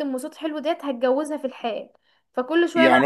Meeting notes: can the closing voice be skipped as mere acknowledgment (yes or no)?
no